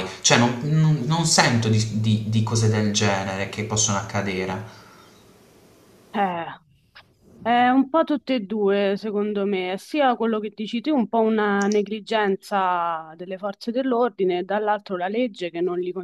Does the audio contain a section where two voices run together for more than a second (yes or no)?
no